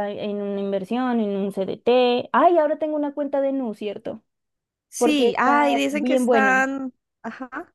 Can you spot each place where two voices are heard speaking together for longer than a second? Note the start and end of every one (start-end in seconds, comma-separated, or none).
5.0-6.6